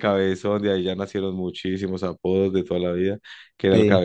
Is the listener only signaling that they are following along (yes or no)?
yes